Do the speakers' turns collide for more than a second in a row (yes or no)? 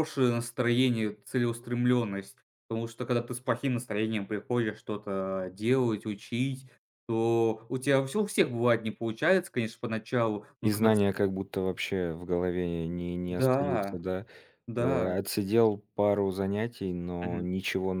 no